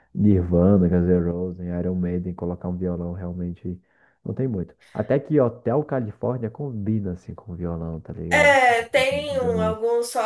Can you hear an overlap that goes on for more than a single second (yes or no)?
yes